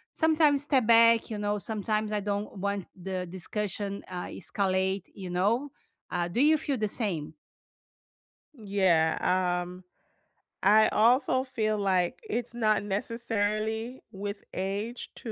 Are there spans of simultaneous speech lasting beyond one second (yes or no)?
no